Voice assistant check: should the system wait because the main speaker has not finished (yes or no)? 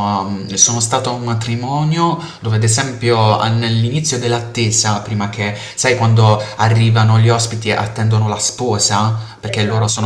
yes